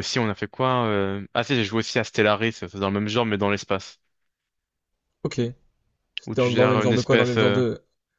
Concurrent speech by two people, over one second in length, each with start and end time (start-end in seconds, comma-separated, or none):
6.4-7.6